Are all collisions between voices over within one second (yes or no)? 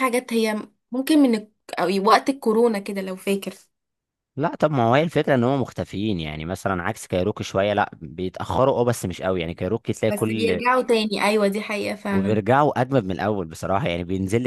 yes